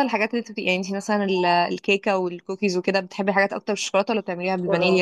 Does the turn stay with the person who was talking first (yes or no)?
no